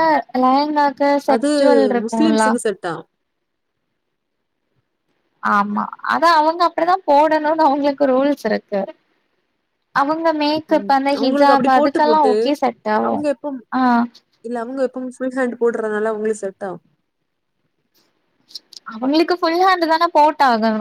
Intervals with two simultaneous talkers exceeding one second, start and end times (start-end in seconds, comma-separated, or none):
10.8-12.3